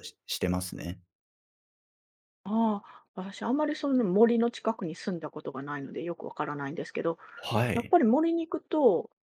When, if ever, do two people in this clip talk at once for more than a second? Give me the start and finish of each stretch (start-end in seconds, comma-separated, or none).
none